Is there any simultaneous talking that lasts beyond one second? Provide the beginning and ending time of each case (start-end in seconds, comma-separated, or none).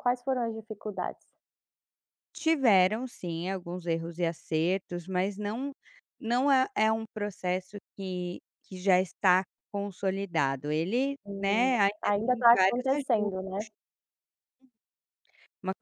11.3-13.4